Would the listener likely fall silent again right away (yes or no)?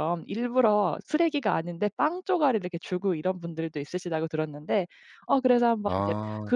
yes